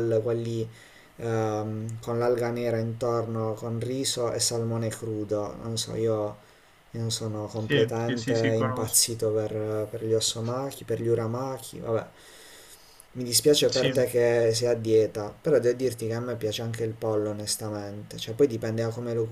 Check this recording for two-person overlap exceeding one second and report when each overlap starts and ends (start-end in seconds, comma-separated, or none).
7.6-9.0